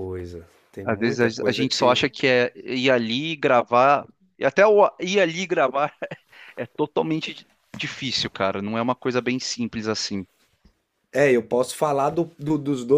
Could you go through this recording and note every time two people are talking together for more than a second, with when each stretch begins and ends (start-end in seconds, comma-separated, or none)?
0.8-2.1